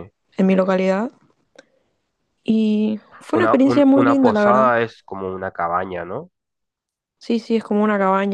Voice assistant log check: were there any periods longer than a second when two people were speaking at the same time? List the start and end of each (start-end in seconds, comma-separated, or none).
3.3-4.7